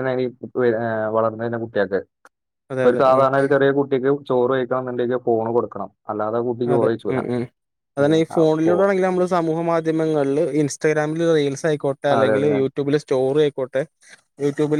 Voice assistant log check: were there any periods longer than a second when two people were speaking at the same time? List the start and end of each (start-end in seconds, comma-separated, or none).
none